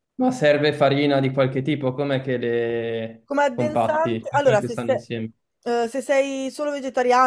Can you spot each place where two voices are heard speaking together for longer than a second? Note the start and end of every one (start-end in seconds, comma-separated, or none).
3.2-5.1